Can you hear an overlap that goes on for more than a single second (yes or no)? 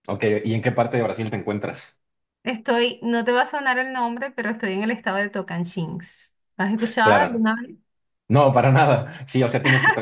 no